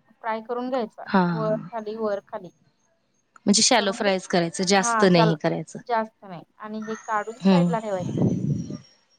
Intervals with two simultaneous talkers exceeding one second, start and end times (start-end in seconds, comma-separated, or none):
3.8-5.4